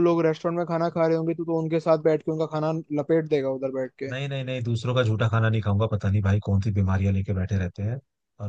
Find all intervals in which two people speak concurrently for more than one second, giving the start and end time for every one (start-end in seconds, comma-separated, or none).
none